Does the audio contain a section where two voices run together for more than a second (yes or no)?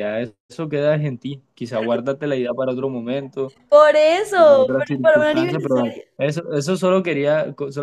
yes